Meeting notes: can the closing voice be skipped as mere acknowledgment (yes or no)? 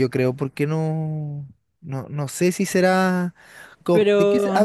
yes